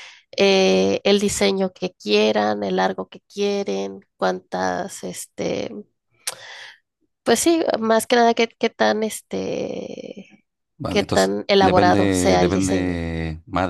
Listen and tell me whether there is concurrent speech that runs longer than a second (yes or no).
yes